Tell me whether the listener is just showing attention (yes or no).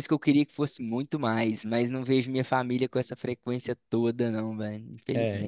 no